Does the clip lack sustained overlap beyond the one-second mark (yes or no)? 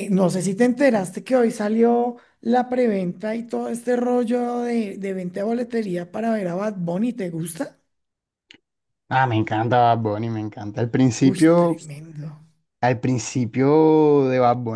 yes